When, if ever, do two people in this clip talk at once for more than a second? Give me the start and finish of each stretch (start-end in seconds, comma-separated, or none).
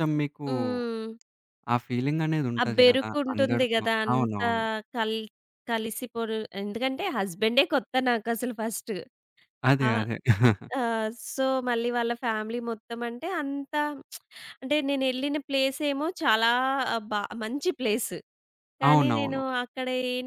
2.6-4.5